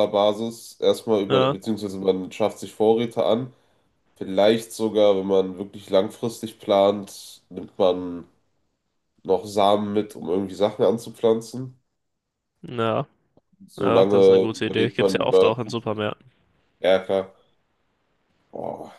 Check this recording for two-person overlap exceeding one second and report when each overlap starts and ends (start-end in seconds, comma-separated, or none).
13.8-15.5